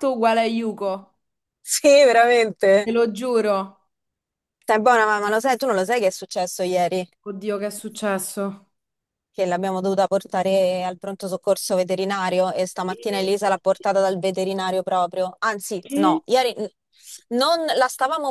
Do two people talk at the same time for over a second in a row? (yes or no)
no